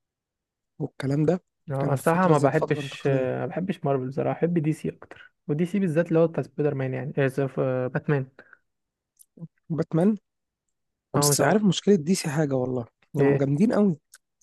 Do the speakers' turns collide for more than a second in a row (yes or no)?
yes